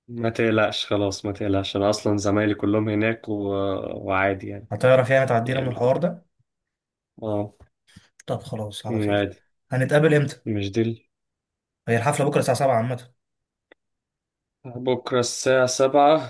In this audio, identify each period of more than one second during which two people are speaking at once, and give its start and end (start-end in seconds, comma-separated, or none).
none